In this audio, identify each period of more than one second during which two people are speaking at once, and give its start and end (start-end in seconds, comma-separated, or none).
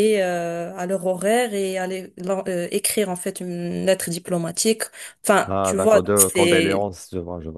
5.5-6.9